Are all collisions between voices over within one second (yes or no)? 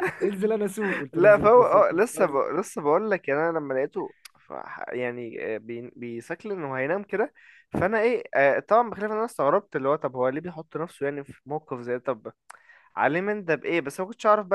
no